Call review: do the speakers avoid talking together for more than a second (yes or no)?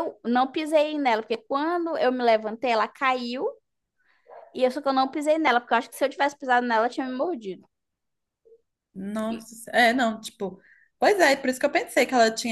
yes